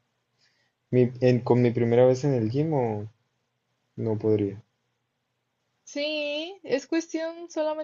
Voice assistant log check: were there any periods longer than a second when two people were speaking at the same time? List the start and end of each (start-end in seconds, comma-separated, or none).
none